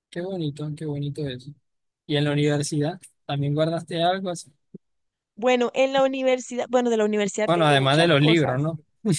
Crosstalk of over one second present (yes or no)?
yes